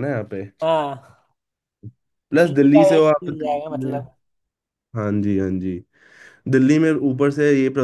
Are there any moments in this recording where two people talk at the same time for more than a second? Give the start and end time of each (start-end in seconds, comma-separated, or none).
2.4-4.0